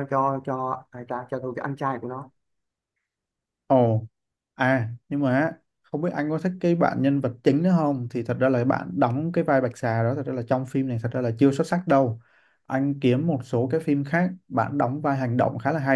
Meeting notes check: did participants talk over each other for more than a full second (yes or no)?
no